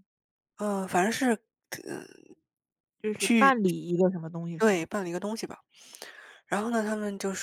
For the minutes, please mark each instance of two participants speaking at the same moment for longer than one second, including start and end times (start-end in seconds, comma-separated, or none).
none